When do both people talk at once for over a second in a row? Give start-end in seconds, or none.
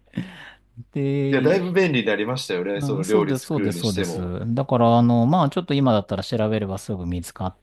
2.7-4.3